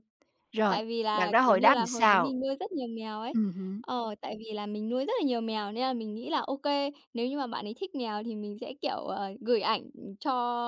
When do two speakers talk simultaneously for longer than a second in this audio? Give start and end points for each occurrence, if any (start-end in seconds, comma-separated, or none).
0.7-2.3